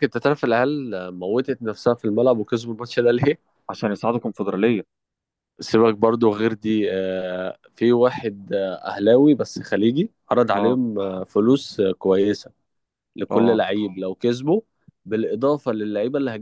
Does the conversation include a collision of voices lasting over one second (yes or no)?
no